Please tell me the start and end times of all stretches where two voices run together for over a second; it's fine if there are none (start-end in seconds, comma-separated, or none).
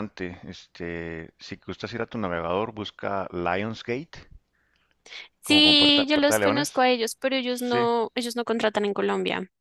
5.4-6.8